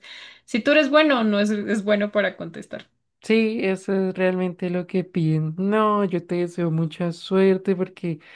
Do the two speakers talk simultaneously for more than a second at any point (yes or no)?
no